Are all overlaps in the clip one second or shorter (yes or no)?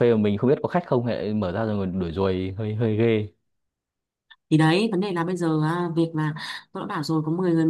yes